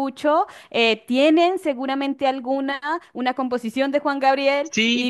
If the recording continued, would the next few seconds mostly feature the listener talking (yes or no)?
yes